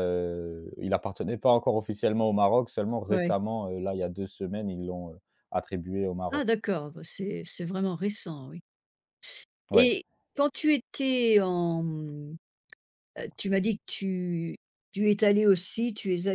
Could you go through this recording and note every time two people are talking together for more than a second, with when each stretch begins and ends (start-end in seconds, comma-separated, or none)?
none